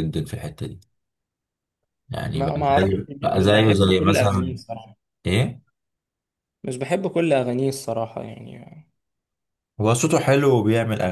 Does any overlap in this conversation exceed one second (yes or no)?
yes